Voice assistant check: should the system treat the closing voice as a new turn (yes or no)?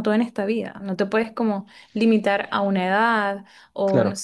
no